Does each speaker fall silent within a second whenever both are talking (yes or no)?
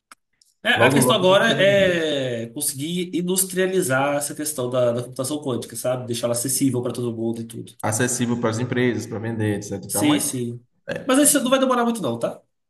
no